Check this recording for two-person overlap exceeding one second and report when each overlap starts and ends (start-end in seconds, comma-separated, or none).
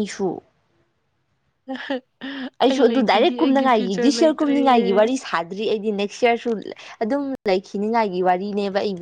2.7-4.5